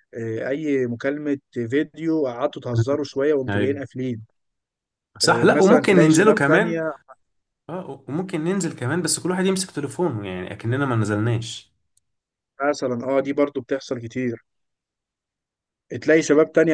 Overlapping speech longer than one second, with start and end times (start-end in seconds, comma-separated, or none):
5.2-6.8